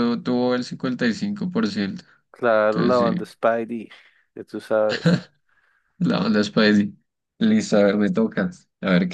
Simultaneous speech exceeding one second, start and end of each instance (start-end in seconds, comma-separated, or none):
none